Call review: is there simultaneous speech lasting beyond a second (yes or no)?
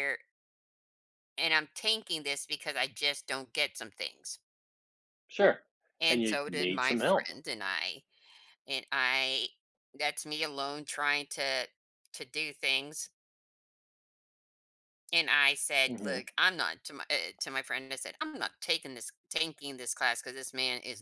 yes